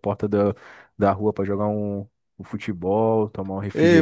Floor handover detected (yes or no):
yes